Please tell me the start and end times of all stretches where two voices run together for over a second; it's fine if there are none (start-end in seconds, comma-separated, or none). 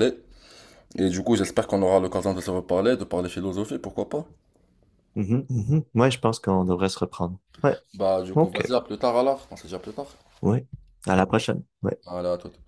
none